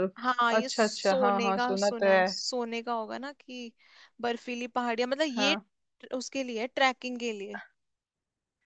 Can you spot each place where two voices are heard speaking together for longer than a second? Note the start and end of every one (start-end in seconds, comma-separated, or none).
0.6-2.2